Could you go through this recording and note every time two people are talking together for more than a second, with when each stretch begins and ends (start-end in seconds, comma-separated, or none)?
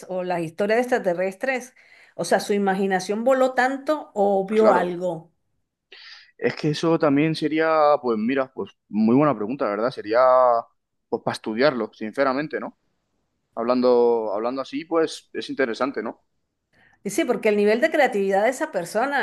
none